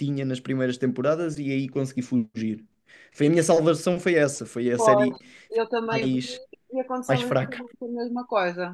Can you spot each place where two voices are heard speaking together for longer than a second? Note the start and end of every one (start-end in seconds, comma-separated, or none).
none